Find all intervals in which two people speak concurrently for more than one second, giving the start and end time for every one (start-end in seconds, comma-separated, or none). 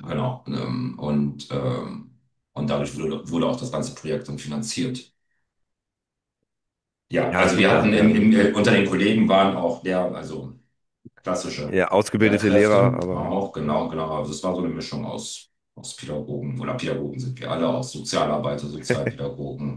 7.3-8.5, 11.7-13.3